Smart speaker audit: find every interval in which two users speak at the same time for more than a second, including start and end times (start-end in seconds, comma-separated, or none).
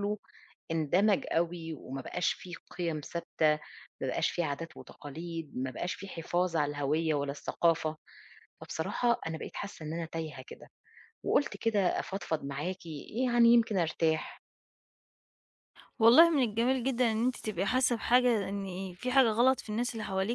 none